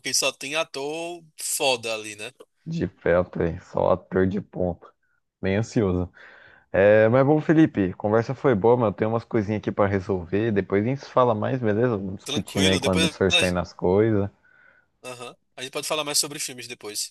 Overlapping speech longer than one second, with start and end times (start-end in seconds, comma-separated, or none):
12.2-13.6